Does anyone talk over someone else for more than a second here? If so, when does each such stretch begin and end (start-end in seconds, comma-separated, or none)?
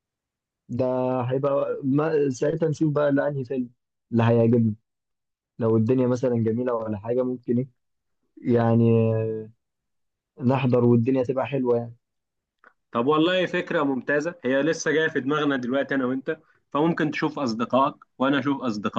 none